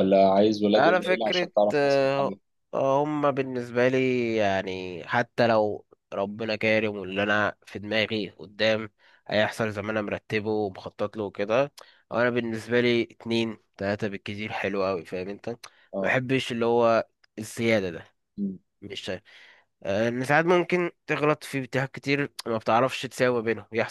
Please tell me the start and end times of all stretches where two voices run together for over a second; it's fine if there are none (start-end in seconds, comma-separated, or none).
0.8-2.4